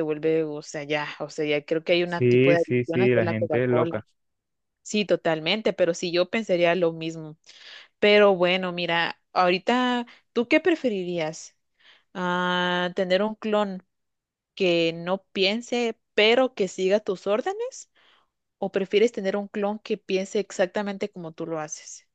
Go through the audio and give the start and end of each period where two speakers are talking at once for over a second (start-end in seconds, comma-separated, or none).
2.0-3.9